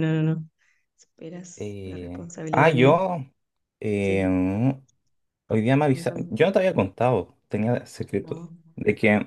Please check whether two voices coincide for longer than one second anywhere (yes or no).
yes